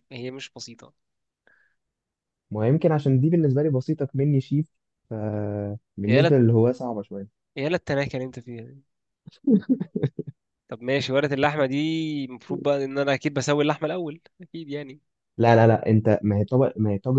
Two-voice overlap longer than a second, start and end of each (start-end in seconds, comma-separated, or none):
none